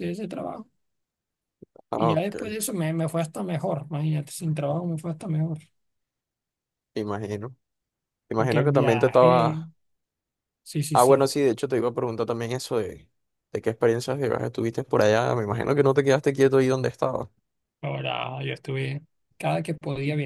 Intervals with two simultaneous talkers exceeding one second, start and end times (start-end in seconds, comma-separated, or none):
8.3-9.6